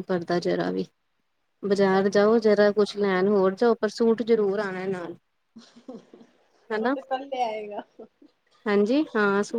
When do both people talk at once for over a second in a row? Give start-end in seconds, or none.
1.9-3.5